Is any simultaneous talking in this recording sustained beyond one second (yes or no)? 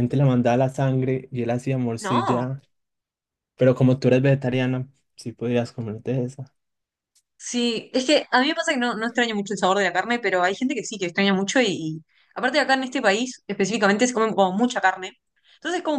no